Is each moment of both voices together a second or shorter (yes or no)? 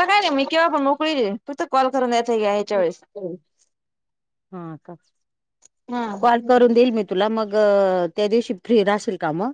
yes